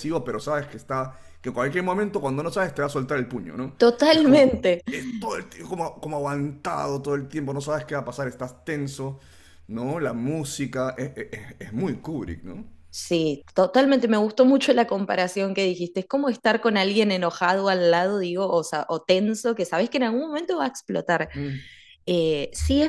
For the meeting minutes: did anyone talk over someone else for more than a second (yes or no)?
no